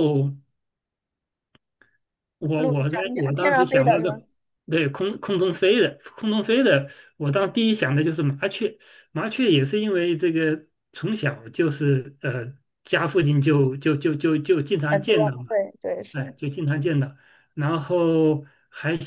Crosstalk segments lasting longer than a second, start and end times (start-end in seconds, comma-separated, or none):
2.6-4.2